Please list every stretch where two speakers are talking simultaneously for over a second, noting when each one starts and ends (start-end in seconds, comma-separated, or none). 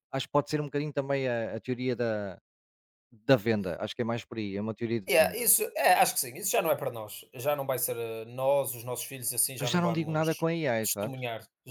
9.6-11.2